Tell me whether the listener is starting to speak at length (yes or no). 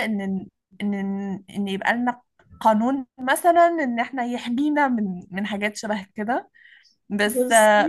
no